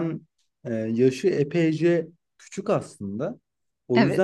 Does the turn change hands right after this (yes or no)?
no